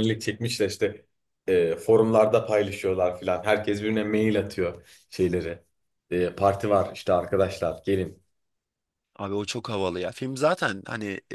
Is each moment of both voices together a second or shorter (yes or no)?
yes